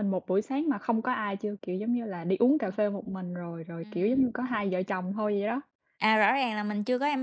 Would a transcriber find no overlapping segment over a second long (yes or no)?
yes